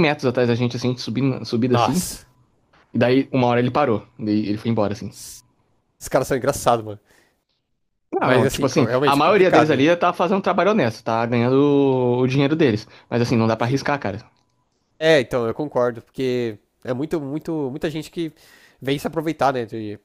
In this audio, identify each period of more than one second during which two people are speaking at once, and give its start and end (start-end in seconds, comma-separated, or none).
8.2-9.8